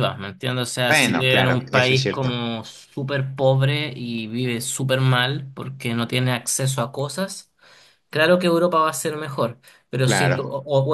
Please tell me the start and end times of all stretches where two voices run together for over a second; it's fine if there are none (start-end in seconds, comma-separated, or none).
0.9-2.4